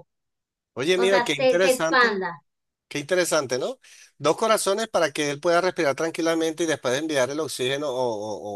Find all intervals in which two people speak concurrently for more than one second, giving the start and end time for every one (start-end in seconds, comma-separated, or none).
0.9-2.2